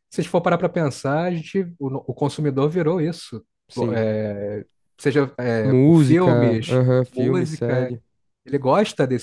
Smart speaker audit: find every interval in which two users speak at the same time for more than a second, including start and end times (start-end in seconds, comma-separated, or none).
5.7-7.9